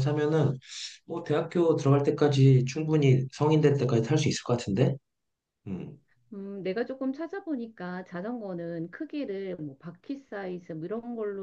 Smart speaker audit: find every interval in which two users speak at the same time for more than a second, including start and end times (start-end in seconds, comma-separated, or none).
none